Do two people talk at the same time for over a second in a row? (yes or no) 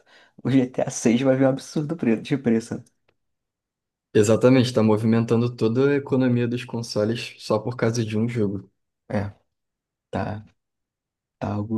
no